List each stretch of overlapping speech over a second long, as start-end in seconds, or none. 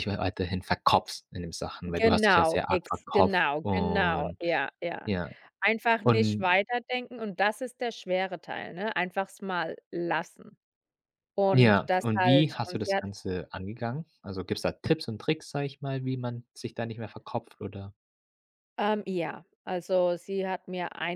1.9-4.4, 11.5-13.0